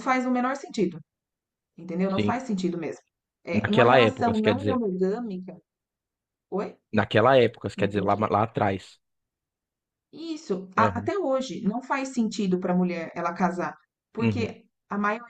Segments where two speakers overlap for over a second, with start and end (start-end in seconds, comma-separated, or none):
3.5-4.8